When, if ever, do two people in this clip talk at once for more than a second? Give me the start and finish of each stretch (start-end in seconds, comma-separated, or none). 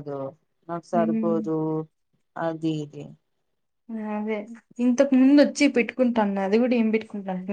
none